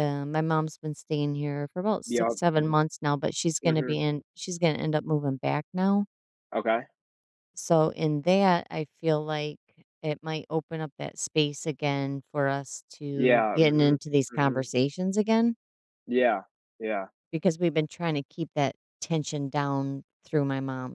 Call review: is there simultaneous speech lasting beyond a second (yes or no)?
yes